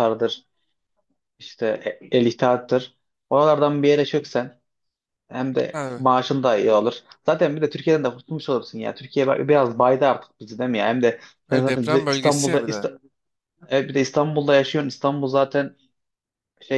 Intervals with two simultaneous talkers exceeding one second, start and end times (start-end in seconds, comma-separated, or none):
11.5-12.9